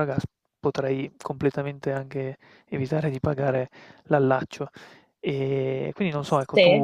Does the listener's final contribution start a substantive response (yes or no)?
no